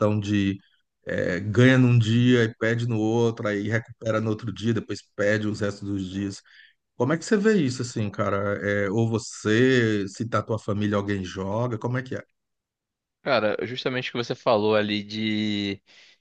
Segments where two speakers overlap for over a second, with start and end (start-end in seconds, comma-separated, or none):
none